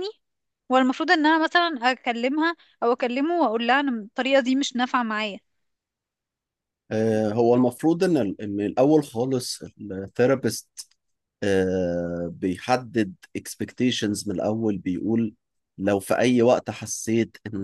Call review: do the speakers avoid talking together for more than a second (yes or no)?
yes